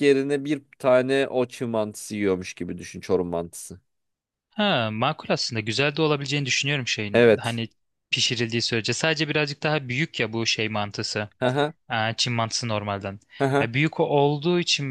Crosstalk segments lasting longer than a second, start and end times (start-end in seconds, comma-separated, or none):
none